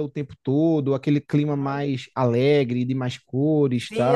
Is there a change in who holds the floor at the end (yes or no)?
yes